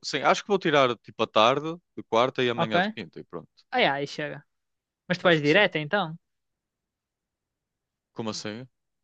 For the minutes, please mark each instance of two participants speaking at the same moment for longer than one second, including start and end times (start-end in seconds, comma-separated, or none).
none